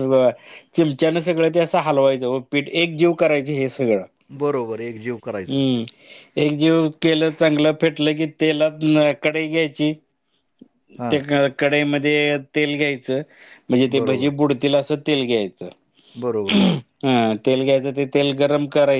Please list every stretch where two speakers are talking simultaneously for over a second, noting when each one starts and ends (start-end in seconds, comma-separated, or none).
none